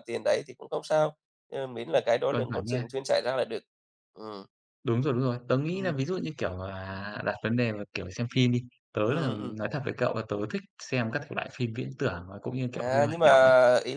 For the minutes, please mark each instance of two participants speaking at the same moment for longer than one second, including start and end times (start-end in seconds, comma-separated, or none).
none